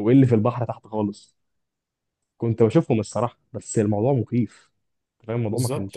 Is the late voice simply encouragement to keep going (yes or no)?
no